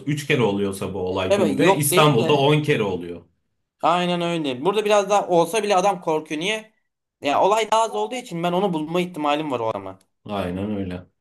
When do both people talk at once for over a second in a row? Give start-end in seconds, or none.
1.3-2.5